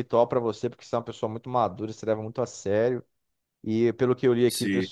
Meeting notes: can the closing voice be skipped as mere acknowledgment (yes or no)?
yes